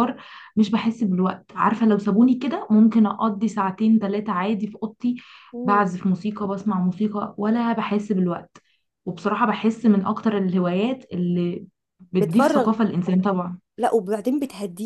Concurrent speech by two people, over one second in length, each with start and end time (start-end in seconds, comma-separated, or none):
none